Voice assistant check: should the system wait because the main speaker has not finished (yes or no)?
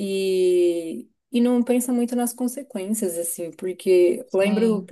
yes